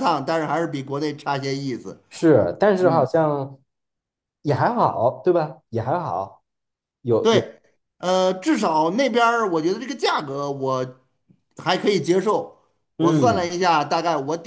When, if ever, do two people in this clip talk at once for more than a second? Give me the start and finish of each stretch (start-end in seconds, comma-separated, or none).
none